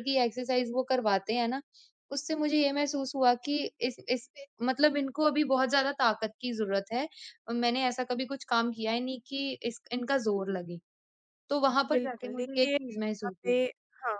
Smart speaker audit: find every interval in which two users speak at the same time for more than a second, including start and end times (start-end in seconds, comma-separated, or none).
11.9-13.6